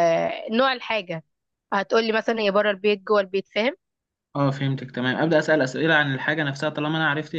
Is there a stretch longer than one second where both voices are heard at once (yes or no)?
no